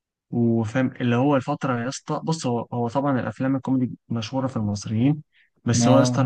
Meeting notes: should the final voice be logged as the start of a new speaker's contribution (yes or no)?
no